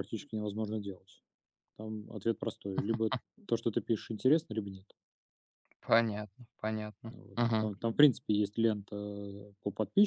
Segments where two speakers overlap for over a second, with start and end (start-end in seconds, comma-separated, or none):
none